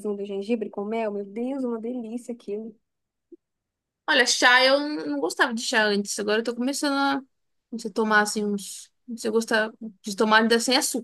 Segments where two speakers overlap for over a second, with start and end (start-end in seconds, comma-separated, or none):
none